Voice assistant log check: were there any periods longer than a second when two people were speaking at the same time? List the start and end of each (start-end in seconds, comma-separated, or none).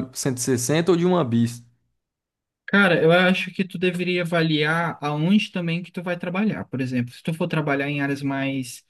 none